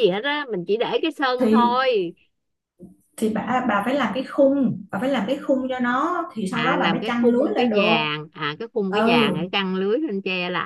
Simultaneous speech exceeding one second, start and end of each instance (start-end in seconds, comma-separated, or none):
6.5-7.9